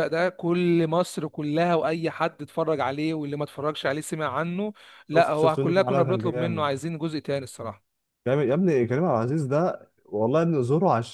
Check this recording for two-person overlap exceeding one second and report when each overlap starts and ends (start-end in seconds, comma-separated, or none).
5.1-6.7